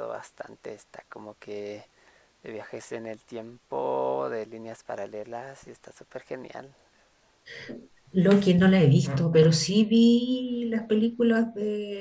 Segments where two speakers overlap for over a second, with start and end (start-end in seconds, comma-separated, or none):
none